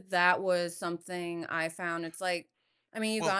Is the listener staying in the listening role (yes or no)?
yes